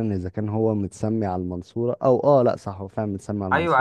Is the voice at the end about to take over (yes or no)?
yes